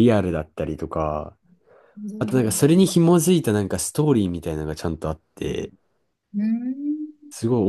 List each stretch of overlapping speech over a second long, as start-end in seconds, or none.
none